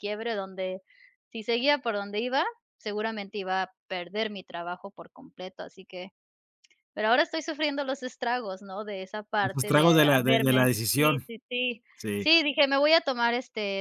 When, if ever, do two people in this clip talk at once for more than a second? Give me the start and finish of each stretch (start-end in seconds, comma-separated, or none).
9.4-11.2